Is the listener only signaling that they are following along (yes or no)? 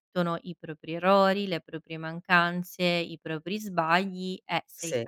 yes